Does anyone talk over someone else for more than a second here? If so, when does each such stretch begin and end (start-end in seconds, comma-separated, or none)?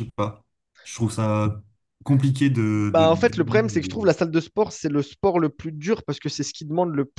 2.8-4.1